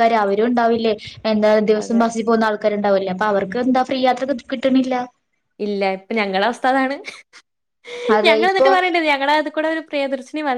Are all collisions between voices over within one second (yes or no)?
yes